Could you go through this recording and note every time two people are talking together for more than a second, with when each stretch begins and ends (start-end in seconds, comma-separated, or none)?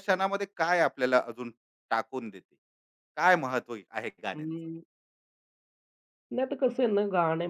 none